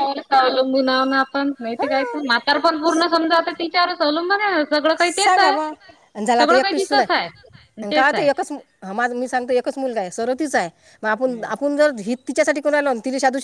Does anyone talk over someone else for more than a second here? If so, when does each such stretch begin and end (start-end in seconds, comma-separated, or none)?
6.4-8.3